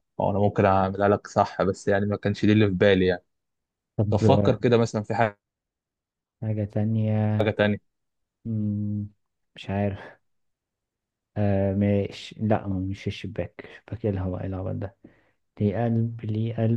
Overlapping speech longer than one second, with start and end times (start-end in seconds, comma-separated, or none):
none